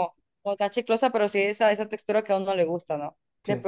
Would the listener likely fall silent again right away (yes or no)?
yes